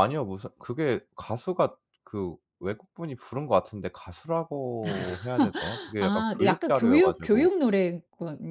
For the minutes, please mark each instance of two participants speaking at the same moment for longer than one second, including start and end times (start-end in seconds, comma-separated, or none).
6.0-7.5